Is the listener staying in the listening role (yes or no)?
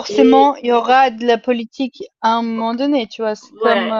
no